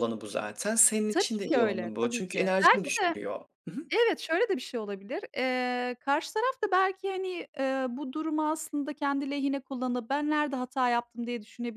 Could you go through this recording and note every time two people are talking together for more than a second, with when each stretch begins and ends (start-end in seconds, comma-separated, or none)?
1.1-3.1